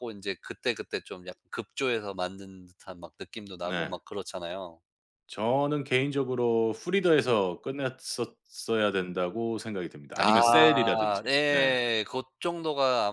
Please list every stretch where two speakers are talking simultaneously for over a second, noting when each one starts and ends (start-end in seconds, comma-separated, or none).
10.2-11.7